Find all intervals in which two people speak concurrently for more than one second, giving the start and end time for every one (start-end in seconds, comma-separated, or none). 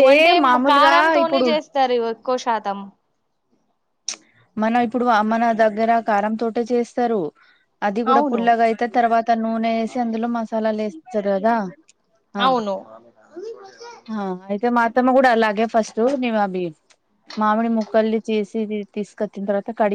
none